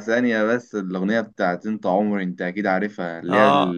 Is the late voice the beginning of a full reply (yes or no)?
no